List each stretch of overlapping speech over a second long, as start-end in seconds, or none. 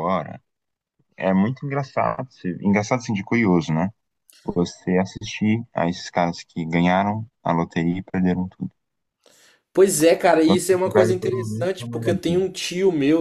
10.4-12.4